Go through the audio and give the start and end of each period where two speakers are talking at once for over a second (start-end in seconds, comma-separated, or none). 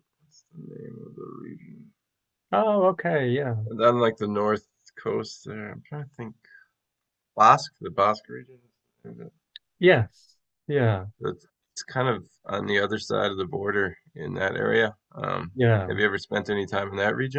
none